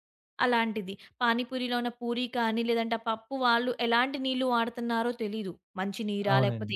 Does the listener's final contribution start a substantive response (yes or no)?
no